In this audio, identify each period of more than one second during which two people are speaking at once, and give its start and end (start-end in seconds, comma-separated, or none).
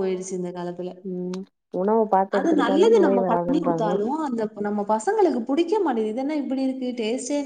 2.4-3.9